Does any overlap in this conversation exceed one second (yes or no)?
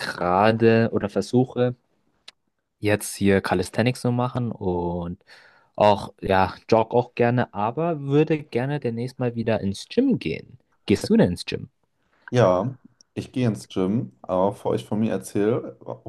no